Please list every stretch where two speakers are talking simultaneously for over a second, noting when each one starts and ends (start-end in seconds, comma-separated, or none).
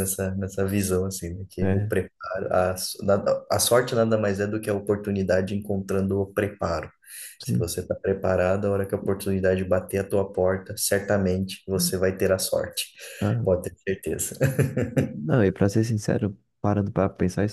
none